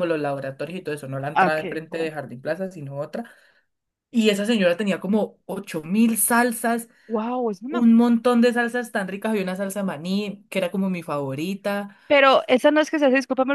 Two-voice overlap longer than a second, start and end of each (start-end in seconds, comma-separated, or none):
none